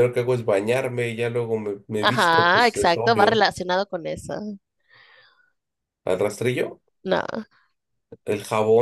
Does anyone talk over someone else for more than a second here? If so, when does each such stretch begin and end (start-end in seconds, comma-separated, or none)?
2.0-3.4